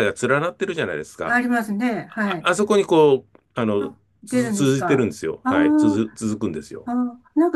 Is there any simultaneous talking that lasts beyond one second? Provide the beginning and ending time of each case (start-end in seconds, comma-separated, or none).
3.8-6.0